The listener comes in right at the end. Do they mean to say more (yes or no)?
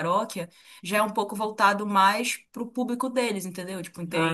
no